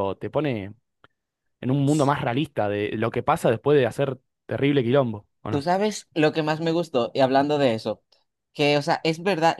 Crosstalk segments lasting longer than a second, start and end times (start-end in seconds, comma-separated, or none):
none